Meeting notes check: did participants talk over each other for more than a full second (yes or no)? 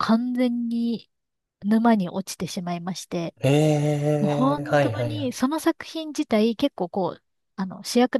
yes